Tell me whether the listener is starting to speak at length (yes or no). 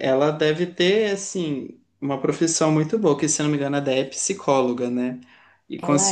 no